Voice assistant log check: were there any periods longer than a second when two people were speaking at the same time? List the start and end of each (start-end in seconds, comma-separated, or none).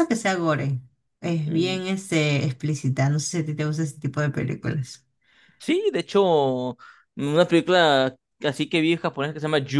none